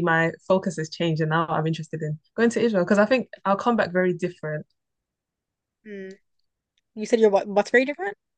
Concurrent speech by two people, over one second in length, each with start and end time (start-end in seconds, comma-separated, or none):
none